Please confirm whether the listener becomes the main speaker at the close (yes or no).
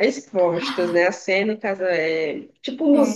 yes